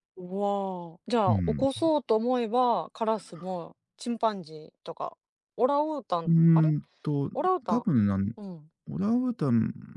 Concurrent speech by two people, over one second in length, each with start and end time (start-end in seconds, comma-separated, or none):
none